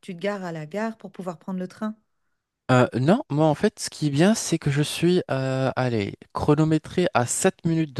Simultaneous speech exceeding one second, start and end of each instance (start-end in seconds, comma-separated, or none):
none